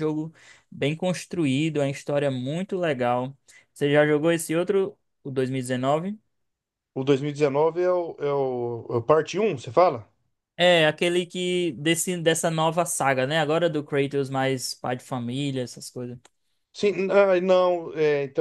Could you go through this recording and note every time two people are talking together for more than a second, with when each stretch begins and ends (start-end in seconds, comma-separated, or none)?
none